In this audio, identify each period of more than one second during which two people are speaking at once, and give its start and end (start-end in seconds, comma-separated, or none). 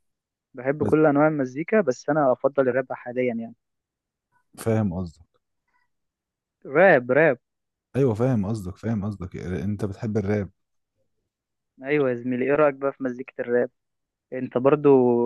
none